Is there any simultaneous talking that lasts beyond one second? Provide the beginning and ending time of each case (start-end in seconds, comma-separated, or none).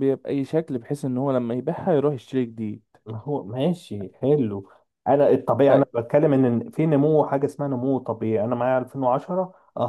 none